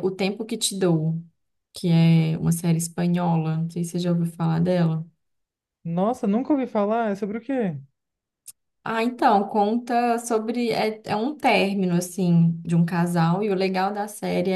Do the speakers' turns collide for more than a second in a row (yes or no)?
no